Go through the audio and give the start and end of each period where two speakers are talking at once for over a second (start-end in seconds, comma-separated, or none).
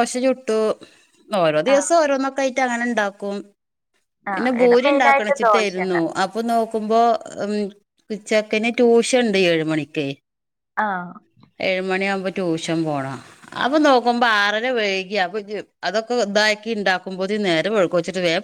4.3-6.0